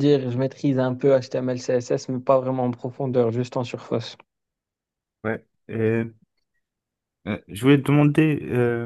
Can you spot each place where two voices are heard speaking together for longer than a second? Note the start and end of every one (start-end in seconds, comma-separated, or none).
none